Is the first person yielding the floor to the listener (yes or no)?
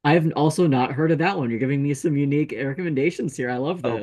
yes